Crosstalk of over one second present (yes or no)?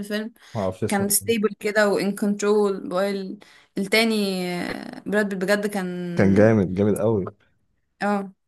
no